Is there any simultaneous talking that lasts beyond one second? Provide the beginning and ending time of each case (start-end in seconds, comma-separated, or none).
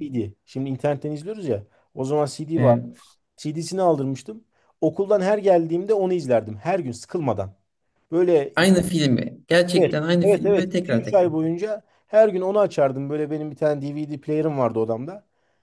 9.8-11.3